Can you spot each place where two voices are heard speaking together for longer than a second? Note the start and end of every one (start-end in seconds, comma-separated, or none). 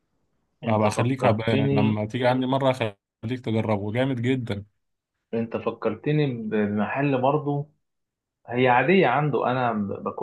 0.7-2.0